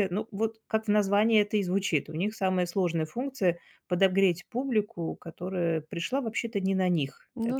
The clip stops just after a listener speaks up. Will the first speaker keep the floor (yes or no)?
yes